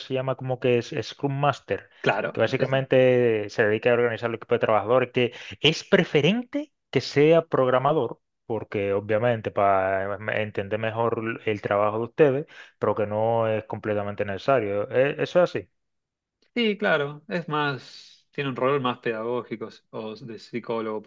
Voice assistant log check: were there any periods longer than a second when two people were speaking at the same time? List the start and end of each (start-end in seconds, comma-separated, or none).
none